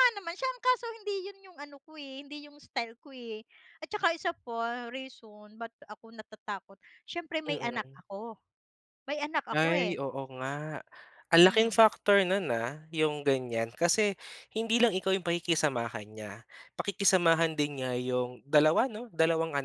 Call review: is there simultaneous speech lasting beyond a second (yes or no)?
no